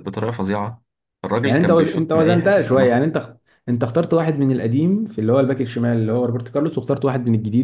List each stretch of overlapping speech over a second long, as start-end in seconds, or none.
1.4-3.1